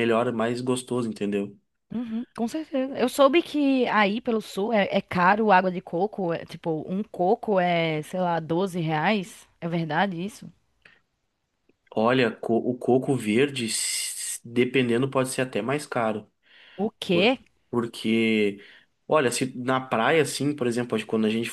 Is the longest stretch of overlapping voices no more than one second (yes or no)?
yes